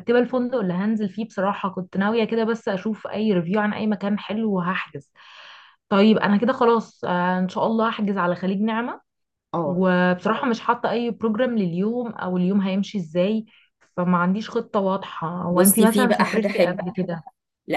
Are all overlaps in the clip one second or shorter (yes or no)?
no